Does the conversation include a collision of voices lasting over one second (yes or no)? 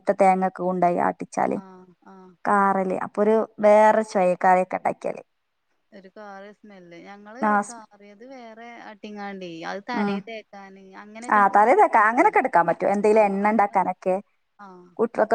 no